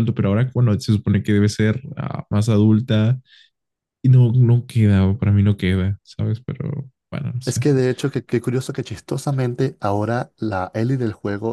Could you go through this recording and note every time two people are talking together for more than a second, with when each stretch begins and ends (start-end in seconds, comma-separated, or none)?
none